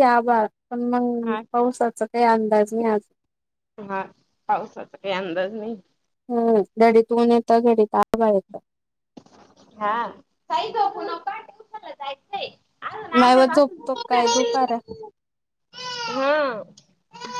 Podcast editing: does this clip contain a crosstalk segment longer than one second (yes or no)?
yes